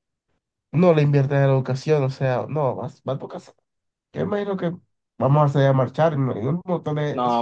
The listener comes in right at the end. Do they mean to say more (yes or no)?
yes